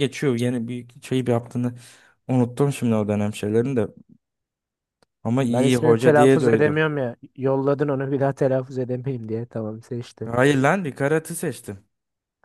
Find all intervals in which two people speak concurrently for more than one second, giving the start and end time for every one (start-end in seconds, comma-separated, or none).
5.5-6.8